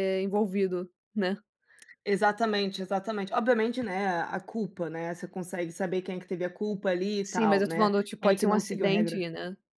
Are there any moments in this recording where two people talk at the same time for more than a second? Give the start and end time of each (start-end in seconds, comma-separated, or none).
7.2-9.2